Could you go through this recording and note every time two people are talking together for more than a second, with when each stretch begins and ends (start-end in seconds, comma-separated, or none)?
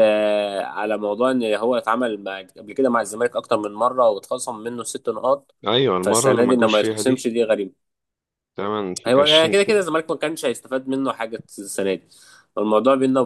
6.0-7.3